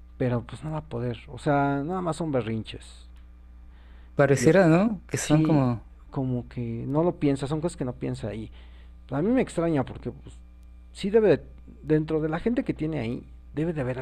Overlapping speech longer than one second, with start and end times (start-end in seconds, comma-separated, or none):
none